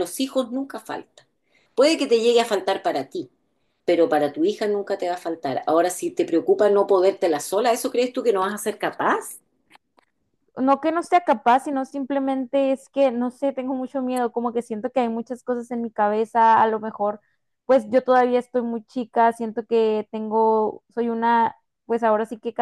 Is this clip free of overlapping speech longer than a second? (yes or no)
yes